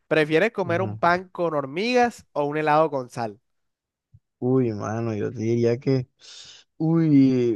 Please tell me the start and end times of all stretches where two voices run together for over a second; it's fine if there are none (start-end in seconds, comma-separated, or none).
none